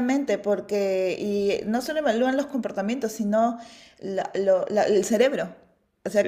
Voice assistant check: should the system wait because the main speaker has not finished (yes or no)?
yes